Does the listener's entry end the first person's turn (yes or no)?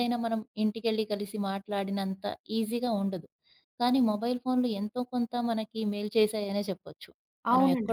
yes